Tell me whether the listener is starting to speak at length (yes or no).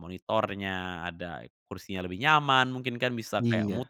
no